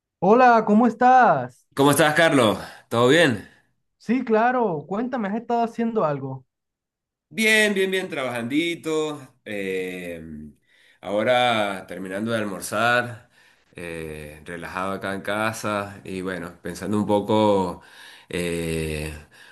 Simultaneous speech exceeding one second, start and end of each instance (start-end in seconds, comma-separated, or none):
none